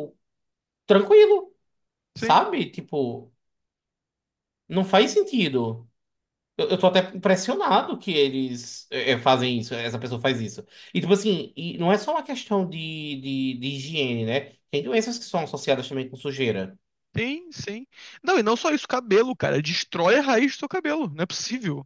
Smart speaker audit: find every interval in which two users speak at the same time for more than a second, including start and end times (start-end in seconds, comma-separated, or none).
none